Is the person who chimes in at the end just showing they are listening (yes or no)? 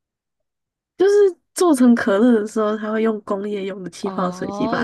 no